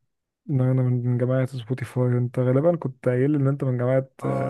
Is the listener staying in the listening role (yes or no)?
no